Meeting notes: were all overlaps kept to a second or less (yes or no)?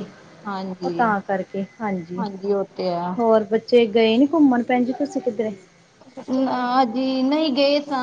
yes